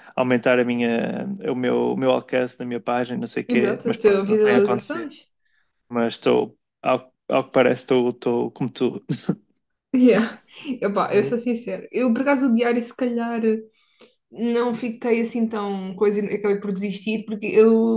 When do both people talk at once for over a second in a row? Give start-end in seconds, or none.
3.5-5.1